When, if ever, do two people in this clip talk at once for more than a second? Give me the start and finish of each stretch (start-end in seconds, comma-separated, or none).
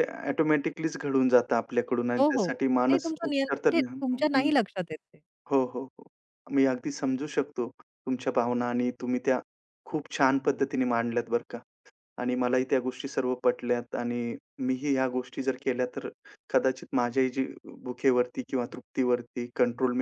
2.2-4.5